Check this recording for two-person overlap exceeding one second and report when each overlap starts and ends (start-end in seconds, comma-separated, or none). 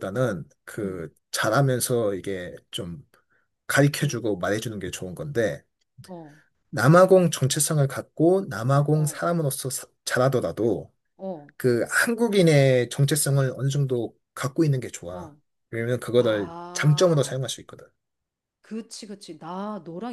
16.1-17.4